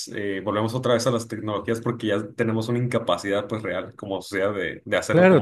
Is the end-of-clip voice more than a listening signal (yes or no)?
yes